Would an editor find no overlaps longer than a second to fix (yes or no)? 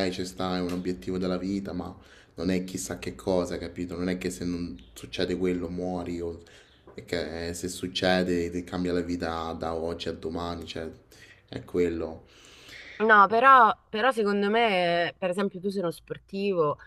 yes